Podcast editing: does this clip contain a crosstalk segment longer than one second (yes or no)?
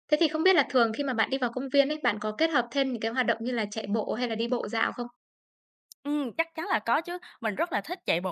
no